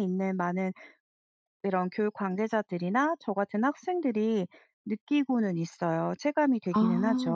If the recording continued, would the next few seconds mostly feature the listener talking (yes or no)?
yes